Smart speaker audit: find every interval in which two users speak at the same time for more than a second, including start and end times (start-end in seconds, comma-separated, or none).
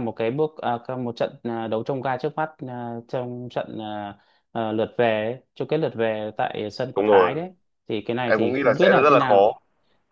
8.3-9.6